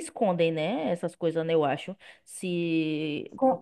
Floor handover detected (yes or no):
yes